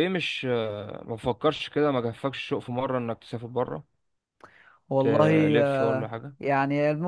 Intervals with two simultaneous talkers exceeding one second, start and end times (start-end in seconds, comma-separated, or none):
5.0-6.4